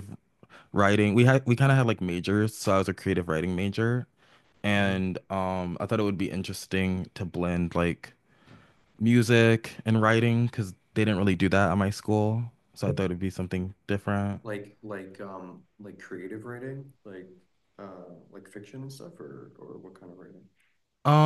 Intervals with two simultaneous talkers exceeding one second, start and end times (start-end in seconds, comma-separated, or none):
none